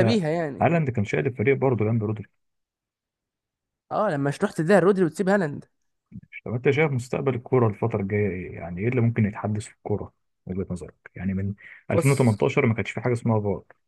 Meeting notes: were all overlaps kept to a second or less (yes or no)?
yes